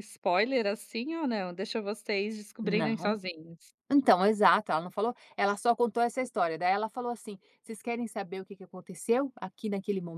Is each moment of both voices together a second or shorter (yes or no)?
yes